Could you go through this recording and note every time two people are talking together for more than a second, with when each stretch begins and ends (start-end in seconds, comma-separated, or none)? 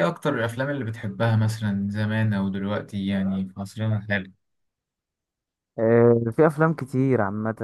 none